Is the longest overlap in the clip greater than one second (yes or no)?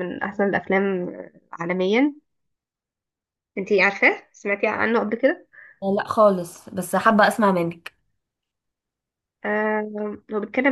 no